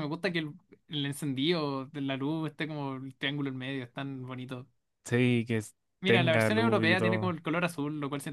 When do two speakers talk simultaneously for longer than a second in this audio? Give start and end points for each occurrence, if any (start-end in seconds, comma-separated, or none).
6.0-7.4